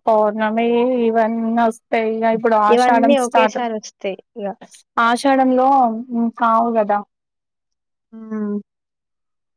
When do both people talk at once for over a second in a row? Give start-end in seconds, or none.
2.7-4.5